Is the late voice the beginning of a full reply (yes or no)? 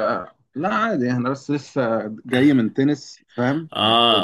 yes